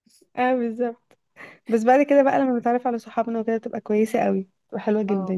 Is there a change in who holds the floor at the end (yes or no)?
yes